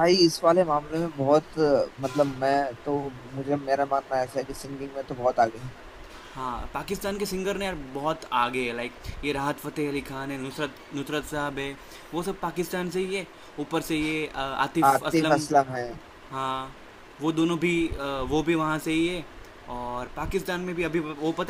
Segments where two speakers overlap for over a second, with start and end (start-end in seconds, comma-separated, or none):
none